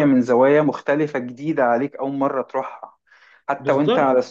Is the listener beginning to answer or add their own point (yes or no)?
no